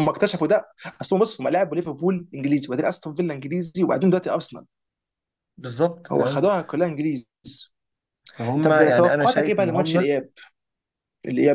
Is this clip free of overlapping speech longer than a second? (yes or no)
no